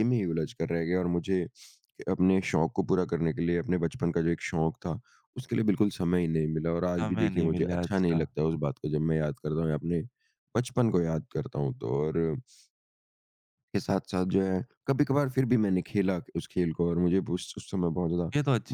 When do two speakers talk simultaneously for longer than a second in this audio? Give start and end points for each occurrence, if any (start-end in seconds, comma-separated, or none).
7.0-8.3